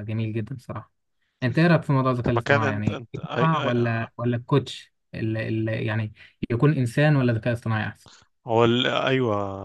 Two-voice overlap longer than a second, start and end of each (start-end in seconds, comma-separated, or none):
2.2-4.1